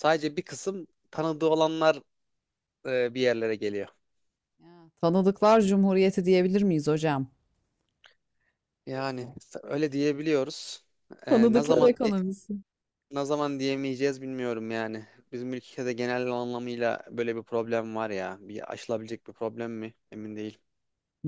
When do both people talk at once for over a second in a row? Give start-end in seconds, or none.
none